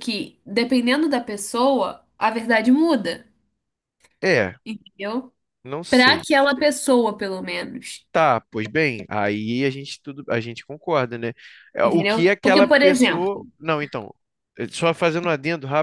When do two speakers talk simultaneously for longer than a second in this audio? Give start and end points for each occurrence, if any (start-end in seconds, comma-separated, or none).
11.8-13.3